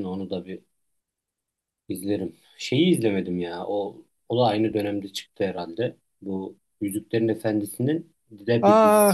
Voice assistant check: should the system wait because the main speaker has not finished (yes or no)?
no